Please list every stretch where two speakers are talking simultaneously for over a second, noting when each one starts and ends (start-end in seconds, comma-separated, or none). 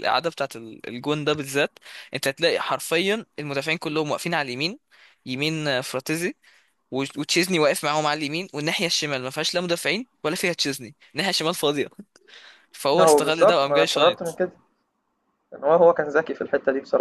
13.0-14.4